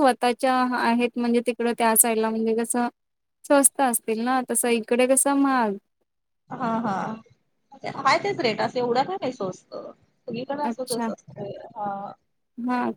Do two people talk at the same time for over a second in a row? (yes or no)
no